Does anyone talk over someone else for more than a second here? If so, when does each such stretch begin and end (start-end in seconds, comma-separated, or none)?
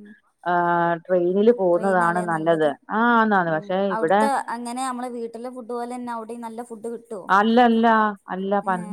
none